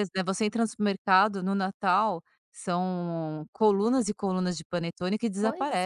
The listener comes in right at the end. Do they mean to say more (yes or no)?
yes